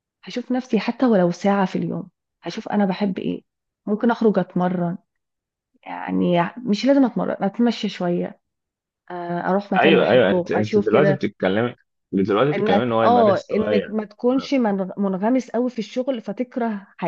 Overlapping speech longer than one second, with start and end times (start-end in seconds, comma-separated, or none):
9.8-11.3, 12.5-14.0